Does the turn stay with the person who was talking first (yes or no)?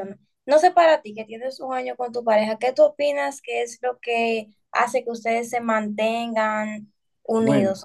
no